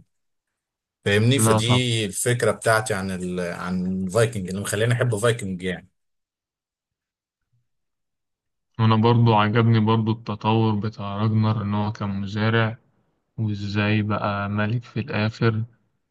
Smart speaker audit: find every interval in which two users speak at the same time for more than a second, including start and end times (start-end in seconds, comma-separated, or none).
none